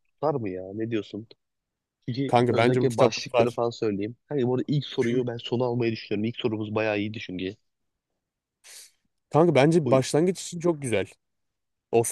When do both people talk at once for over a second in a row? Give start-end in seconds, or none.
2.3-3.6